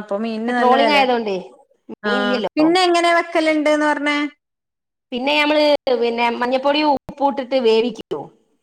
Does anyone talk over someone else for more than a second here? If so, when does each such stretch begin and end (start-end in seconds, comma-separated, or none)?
none